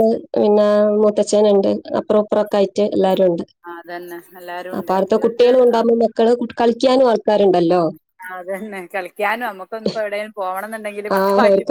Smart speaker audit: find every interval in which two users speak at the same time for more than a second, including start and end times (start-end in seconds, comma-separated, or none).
none